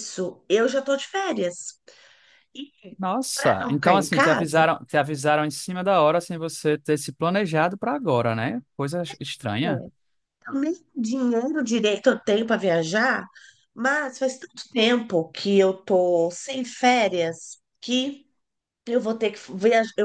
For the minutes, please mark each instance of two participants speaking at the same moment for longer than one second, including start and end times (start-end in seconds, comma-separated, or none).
3.3-4.6